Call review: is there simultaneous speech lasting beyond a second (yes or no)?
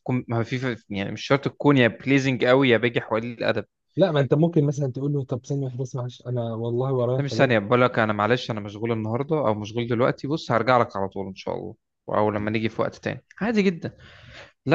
no